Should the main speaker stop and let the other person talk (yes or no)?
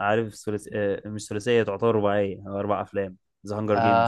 yes